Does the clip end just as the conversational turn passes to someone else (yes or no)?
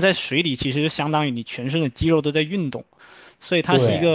no